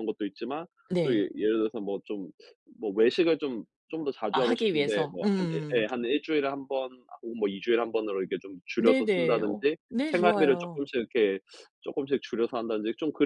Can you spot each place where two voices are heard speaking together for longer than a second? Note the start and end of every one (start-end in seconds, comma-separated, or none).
4.3-5.8, 8.8-10.9